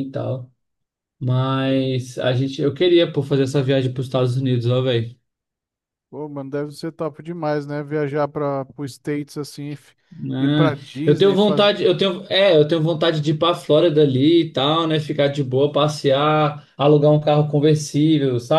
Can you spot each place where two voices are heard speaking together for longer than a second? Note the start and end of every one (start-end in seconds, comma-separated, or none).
10.4-11.7